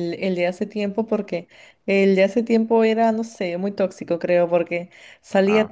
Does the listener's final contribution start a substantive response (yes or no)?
no